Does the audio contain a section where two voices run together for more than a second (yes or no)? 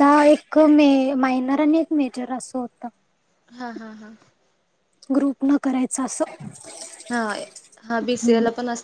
no